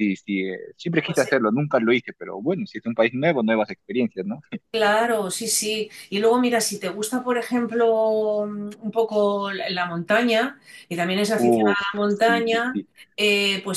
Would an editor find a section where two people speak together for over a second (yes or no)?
yes